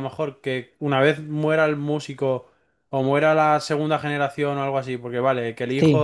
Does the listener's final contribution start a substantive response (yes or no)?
no